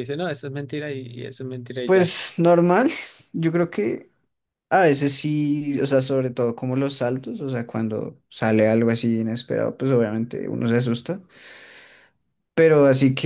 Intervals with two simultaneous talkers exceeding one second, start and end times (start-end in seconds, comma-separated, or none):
none